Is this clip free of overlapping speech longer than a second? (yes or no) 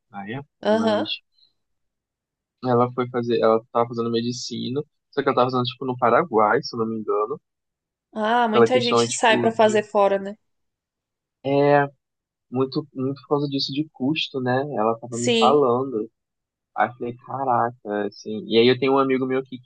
no